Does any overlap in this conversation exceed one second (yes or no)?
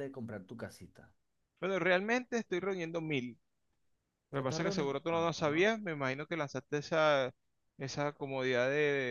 yes